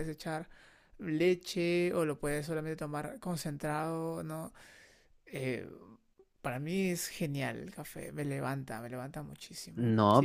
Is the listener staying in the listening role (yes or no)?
no